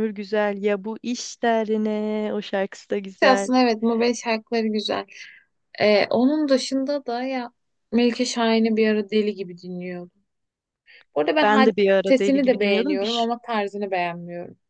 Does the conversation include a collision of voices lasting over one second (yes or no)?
yes